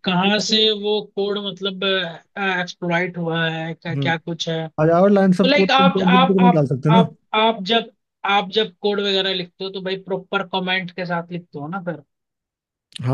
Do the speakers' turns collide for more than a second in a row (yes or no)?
yes